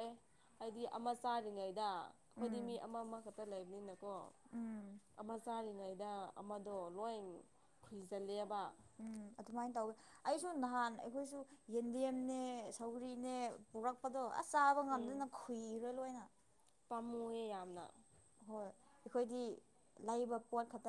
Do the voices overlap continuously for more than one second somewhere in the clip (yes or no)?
no